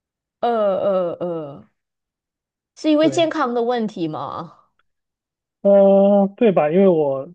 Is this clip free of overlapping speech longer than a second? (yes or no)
yes